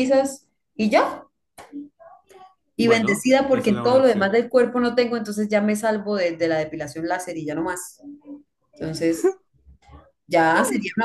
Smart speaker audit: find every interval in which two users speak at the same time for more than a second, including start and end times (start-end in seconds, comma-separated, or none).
2.8-4.3